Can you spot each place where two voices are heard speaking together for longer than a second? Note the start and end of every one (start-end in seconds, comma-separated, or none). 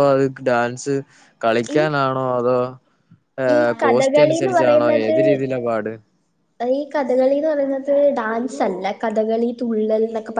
3.6-5.2